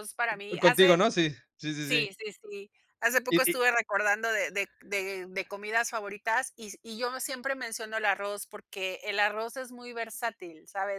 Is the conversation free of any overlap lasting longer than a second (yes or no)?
yes